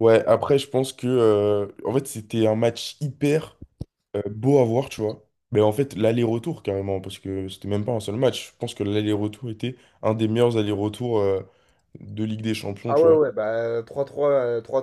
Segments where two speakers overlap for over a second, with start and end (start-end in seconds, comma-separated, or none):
none